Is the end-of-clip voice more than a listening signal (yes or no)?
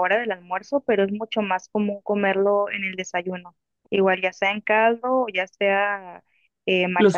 no